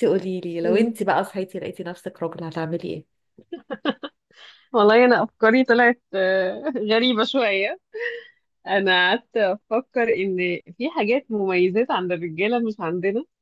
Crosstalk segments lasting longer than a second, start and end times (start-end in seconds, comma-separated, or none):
none